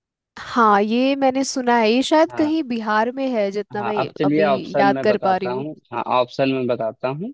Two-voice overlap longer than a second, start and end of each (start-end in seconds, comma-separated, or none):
3.8-5.7